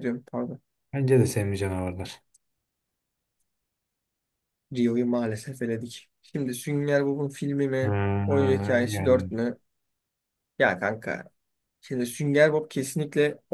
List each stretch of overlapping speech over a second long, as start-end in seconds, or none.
7.8-9.2